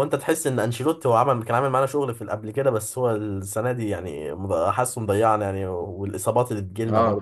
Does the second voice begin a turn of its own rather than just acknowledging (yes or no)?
yes